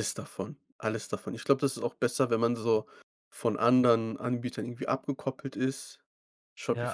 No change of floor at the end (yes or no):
yes